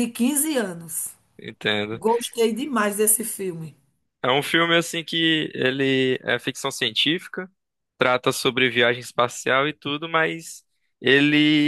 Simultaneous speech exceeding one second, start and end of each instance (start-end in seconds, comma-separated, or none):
none